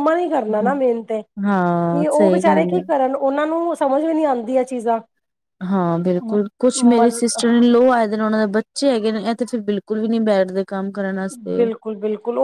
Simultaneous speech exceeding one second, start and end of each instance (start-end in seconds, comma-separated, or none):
1.4-2.8